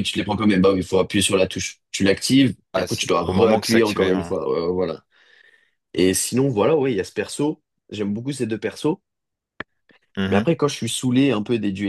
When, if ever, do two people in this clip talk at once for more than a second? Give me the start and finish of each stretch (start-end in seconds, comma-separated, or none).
2.7-4.3